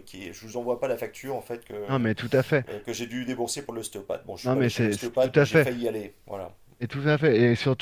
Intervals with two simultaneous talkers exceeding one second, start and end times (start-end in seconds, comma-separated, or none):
4.4-5.7